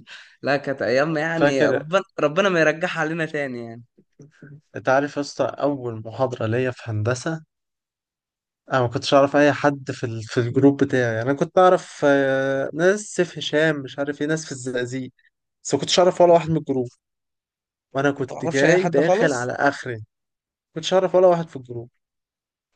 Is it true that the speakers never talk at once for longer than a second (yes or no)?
no